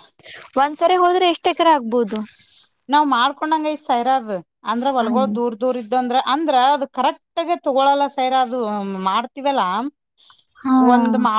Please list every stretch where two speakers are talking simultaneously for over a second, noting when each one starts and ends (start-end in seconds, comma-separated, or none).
none